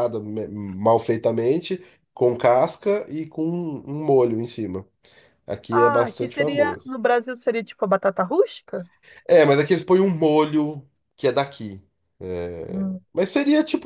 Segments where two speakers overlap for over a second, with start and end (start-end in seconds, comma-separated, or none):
5.7-7.0